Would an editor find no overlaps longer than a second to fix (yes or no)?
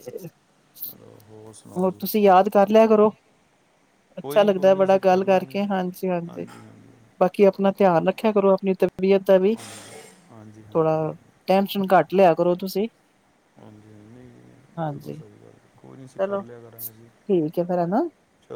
no